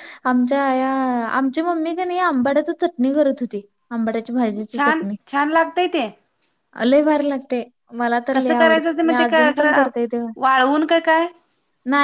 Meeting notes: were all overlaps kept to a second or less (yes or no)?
no